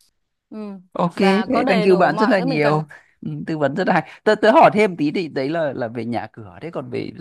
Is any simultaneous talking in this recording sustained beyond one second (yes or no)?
yes